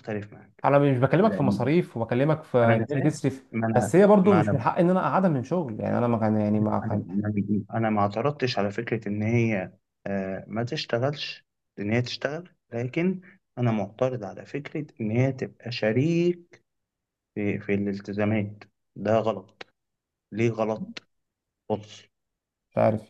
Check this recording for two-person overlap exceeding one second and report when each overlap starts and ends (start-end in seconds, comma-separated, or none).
2.6-4.6